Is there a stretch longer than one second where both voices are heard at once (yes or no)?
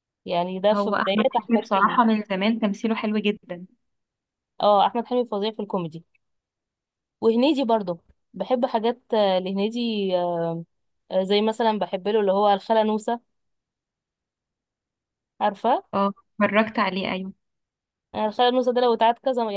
yes